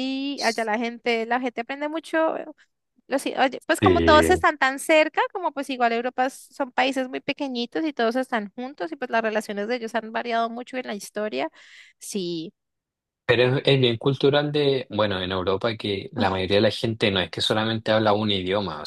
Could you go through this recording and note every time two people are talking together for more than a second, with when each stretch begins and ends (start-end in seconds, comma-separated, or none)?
none